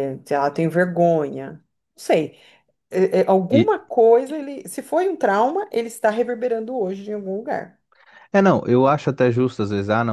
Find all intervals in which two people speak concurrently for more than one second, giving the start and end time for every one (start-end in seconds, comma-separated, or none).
none